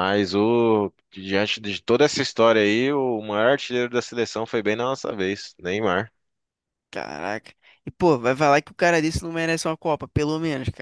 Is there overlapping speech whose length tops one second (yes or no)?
no